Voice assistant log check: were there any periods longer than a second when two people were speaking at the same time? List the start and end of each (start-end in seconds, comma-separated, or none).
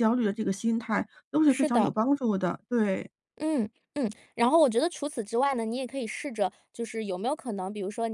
none